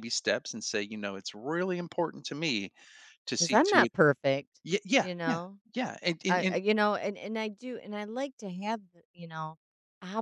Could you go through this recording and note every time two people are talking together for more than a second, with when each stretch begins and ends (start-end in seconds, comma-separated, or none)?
none